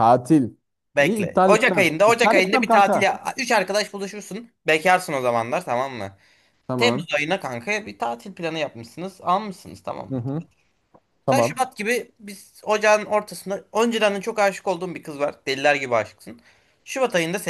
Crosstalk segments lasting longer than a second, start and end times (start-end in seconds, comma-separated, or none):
1.0-3.1